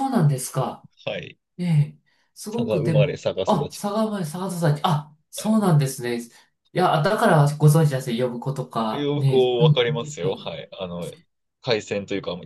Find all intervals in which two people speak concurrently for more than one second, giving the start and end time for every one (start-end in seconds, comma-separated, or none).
2.5-3.8, 8.9-10.6